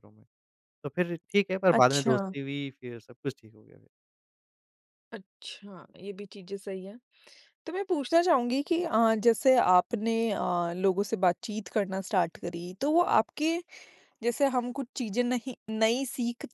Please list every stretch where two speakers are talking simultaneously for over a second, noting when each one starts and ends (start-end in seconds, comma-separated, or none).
none